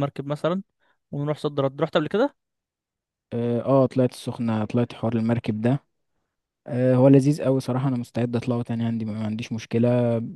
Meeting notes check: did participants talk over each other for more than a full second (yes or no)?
no